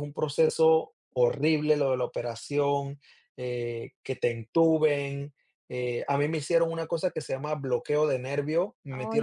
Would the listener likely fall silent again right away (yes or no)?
yes